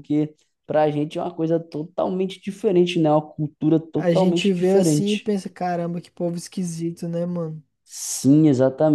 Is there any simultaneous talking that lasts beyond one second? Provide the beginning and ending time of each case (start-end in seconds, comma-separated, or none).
4.0-5.4